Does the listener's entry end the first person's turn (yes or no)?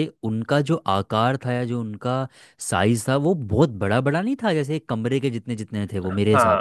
yes